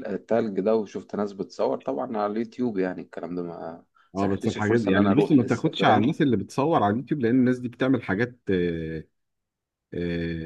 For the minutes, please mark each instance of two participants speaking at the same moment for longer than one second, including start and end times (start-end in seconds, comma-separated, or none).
4.2-6.2